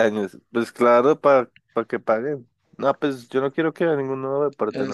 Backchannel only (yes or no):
no